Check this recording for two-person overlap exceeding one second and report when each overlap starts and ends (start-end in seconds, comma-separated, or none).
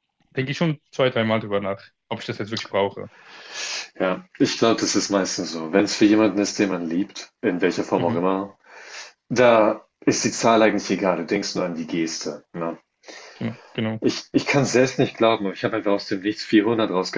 none